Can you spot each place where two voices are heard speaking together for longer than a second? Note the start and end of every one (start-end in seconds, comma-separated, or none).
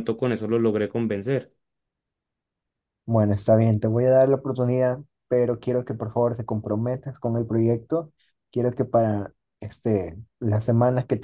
none